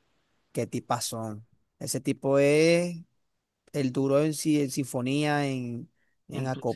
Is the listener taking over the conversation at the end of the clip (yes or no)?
no